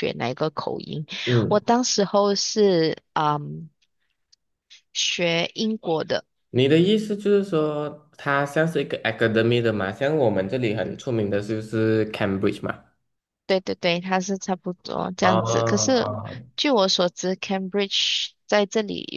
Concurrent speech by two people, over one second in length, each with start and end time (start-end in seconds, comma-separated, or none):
none